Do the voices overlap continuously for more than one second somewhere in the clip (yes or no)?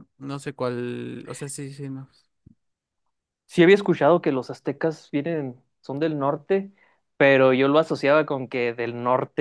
no